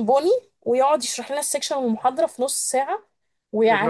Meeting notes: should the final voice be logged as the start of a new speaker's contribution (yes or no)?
no